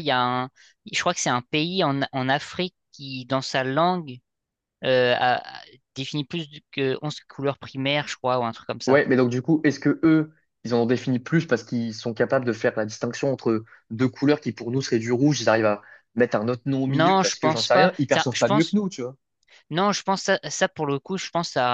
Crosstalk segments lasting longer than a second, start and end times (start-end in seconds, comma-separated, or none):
16.9-18.8